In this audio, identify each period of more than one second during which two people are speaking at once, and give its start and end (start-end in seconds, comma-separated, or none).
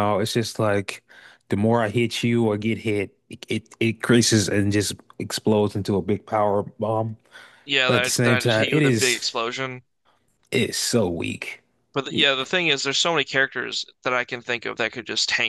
7.8-9.3